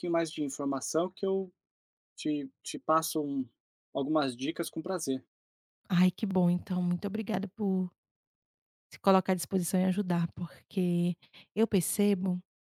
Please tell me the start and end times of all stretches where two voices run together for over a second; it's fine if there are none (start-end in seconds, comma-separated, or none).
none